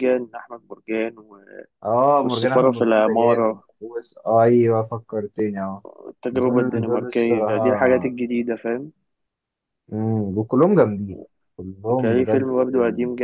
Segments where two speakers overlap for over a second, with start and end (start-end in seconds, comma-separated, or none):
2.2-3.6, 6.3-8.1